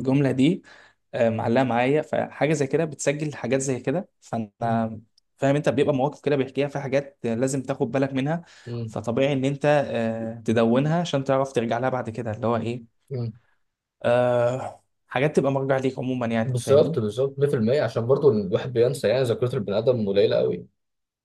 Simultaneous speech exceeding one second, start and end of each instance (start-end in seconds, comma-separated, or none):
none